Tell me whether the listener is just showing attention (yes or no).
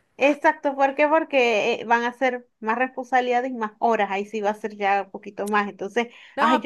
no